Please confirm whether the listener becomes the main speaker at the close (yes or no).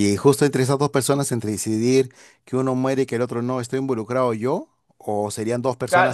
yes